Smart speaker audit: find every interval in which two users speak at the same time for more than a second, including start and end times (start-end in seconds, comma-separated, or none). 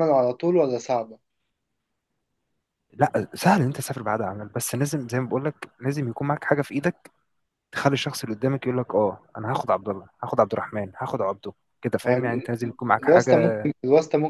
12.1-13.7